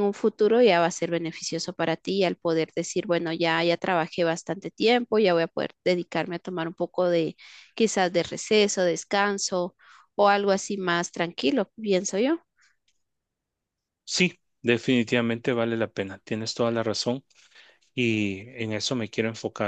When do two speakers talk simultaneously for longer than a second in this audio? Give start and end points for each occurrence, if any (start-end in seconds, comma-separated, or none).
none